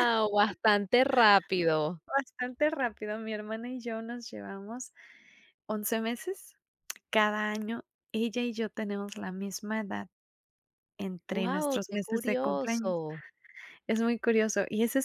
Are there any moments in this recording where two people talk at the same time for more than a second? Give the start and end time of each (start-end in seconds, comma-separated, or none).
11.3-12.9